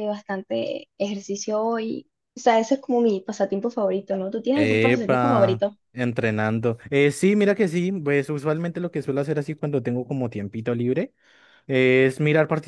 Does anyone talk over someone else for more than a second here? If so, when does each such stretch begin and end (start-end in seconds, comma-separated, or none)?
4.5-5.8